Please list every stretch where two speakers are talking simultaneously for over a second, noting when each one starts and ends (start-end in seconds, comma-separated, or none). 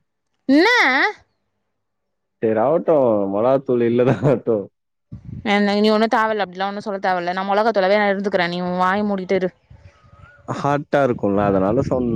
none